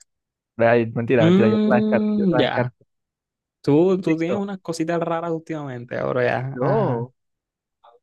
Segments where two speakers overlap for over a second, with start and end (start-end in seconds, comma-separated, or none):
1.2-2.7